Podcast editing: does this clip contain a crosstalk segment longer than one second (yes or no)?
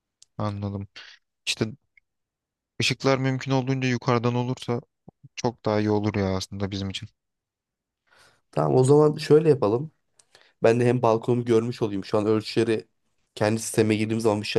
no